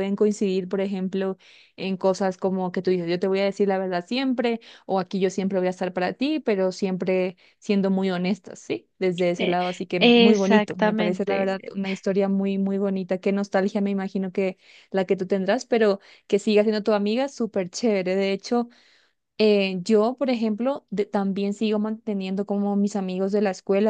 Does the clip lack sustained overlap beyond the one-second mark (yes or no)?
no